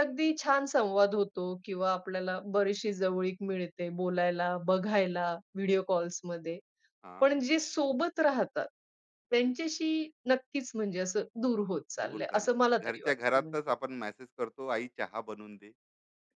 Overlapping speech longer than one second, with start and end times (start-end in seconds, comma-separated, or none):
12.0-13.7